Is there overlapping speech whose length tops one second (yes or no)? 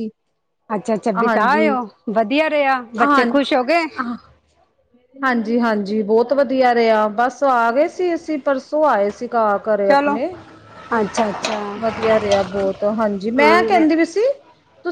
no